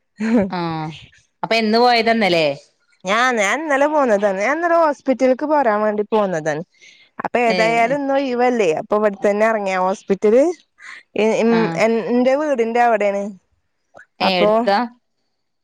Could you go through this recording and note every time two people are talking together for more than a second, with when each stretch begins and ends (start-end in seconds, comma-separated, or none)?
none